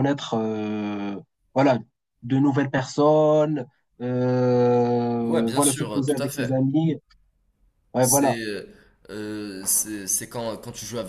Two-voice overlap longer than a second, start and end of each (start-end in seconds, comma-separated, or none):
5.2-6.7